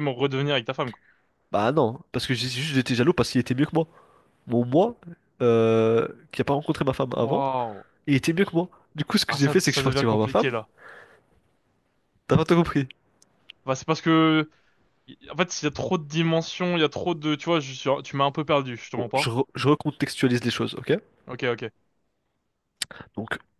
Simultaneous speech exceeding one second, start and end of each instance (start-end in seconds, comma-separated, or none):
9.3-10.5